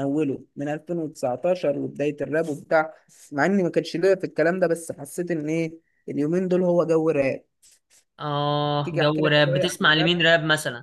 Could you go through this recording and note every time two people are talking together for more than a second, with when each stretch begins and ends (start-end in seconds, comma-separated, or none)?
8.8-10.2